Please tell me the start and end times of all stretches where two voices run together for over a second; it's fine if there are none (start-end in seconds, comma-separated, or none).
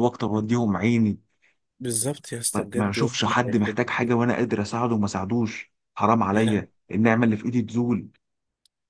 2.5-4.2